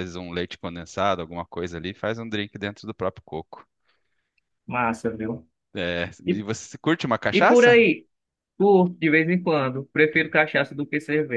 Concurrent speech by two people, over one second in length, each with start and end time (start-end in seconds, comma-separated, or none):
none